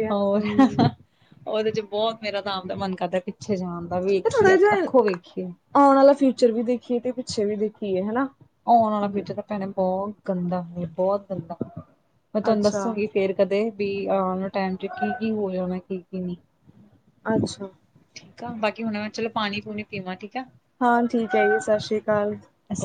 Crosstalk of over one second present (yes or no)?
no